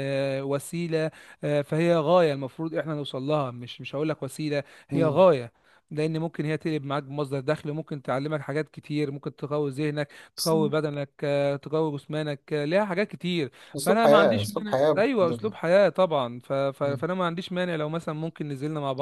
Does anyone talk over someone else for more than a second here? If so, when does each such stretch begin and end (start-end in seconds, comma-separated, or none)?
13.8-15.5